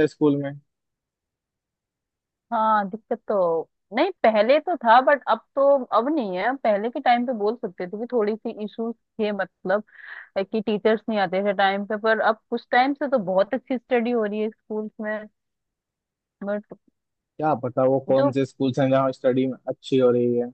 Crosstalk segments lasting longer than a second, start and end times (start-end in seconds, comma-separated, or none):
none